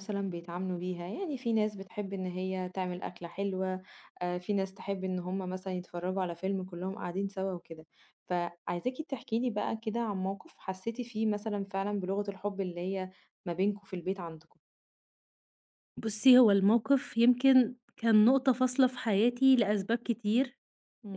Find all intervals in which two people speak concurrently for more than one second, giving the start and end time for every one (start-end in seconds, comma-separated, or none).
none